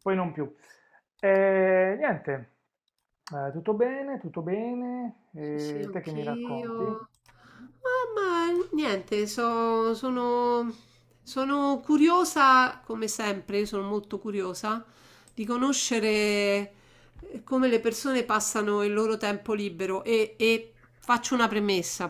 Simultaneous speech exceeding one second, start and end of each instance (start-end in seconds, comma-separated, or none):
5.4-7.0